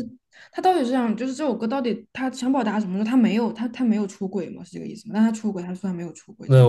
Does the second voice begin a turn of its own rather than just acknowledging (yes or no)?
yes